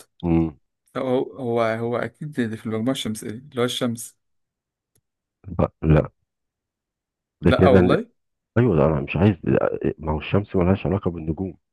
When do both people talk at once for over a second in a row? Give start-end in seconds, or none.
none